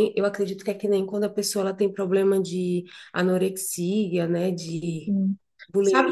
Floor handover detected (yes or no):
yes